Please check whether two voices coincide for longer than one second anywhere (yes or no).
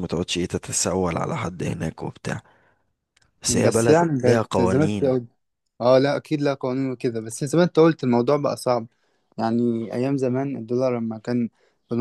yes